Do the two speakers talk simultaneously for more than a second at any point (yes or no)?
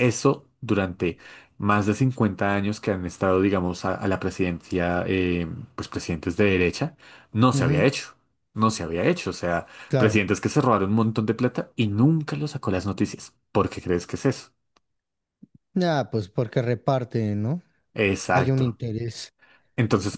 no